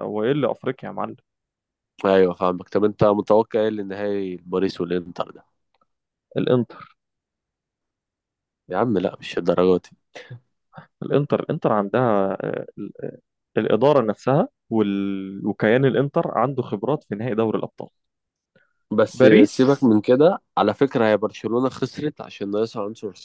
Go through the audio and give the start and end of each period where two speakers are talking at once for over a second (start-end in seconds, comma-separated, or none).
none